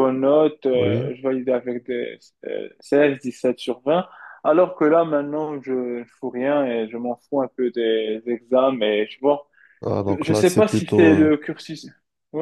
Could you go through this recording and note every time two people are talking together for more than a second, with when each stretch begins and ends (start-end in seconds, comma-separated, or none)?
10.1-11.3